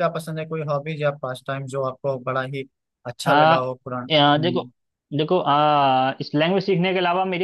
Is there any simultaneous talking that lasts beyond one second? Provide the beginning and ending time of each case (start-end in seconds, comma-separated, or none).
none